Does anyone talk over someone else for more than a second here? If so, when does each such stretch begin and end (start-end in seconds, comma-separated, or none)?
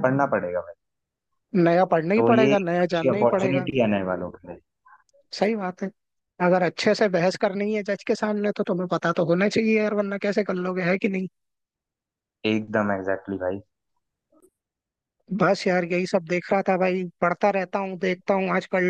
2.2-3.7